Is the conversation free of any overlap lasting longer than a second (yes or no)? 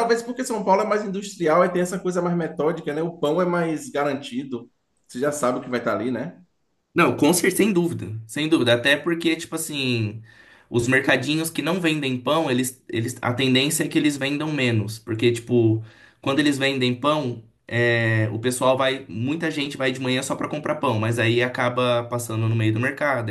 yes